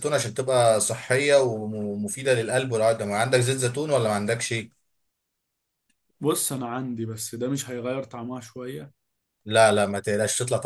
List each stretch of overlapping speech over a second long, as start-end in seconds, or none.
none